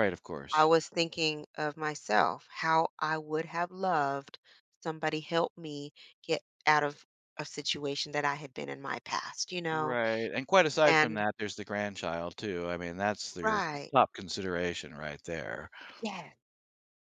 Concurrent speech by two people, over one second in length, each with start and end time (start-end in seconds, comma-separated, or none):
none